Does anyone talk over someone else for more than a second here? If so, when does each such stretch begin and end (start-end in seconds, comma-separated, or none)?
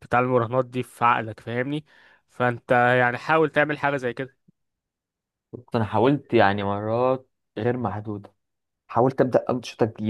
none